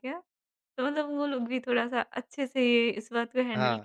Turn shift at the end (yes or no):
no